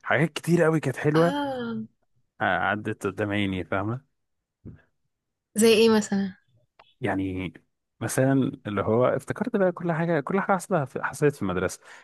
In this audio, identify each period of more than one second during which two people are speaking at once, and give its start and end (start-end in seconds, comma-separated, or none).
none